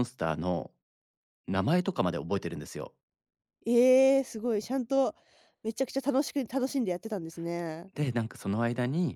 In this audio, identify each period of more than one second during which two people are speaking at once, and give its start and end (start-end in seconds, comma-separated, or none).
none